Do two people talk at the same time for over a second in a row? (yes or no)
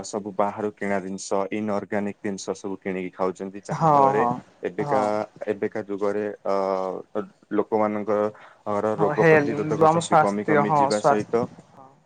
yes